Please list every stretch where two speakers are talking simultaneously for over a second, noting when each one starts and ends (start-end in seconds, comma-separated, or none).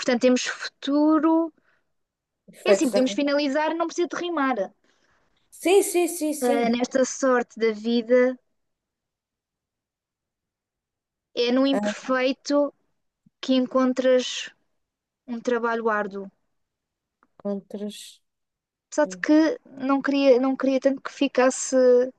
none